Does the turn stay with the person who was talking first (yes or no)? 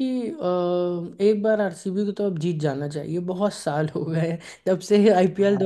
yes